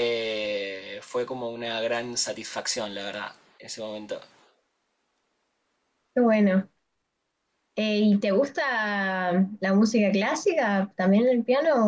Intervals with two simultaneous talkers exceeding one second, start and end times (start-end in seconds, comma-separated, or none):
none